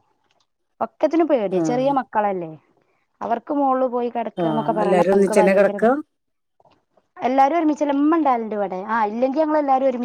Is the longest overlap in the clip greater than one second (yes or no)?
yes